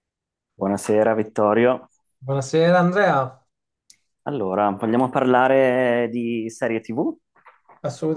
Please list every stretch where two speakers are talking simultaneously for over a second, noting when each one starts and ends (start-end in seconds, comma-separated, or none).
none